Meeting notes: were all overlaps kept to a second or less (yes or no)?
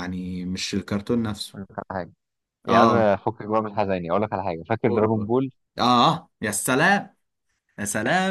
yes